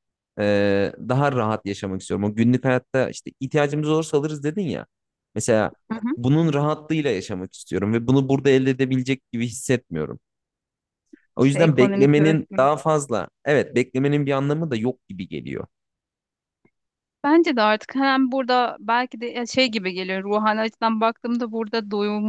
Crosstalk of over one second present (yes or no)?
yes